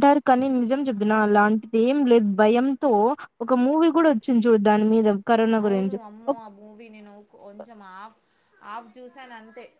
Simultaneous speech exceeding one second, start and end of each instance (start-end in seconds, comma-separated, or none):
none